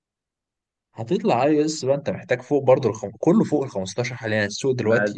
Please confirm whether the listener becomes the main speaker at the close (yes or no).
yes